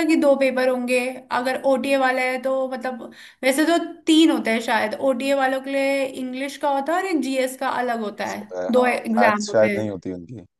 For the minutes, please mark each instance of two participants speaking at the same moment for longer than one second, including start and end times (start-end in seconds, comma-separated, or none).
8.2-10.0